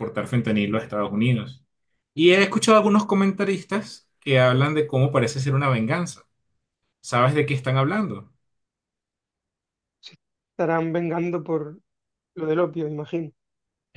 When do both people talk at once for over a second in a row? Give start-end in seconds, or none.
none